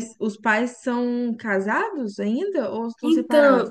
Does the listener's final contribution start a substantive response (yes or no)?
yes